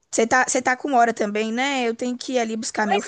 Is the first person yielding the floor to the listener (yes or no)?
yes